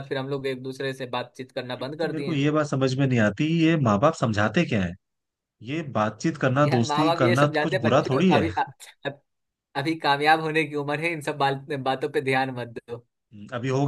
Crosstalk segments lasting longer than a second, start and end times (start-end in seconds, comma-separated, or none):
6.7-8.5